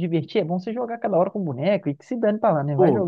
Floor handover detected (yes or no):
yes